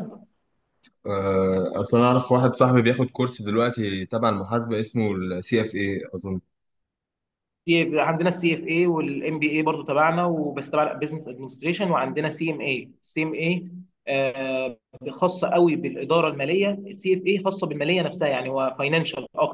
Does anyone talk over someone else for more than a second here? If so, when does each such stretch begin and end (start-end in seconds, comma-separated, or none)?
none